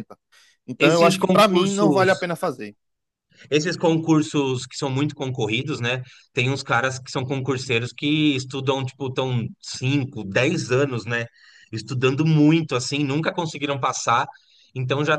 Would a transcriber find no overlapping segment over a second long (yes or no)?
no